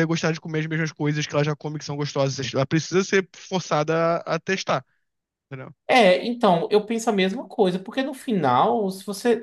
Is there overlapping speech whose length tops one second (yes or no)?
no